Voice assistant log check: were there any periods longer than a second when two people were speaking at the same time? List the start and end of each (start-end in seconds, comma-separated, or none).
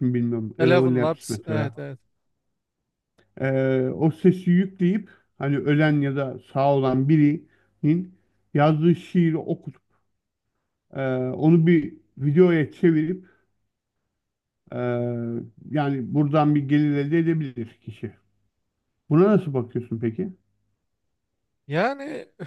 0.6-1.8